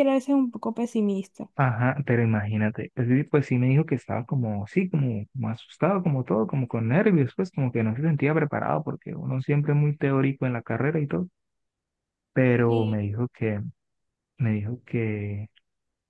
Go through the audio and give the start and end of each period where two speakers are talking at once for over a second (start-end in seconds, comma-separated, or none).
none